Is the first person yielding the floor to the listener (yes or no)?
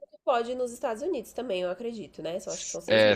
yes